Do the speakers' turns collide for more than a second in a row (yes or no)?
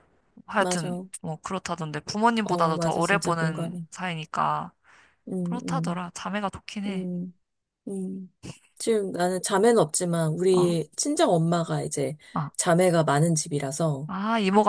yes